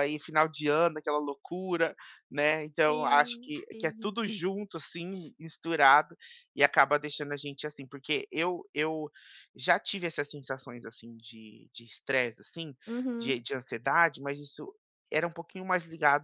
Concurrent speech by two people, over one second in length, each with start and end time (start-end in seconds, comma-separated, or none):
2.8-4.2